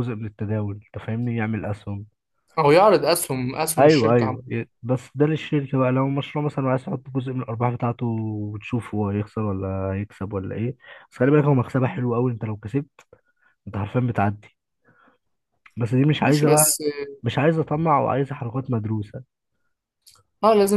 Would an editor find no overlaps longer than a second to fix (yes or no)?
yes